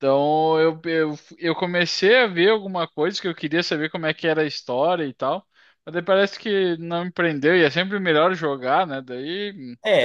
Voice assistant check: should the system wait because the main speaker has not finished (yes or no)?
no